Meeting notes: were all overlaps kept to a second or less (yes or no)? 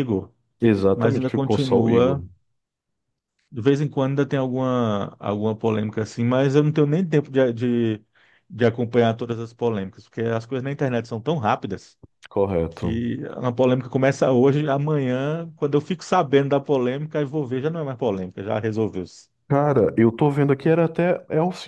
no